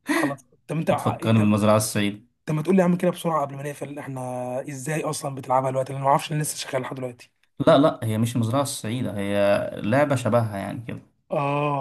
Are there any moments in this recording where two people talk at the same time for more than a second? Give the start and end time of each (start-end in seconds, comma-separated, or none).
none